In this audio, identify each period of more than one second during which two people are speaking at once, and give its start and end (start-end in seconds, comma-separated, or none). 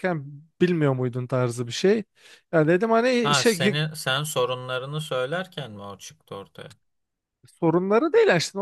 none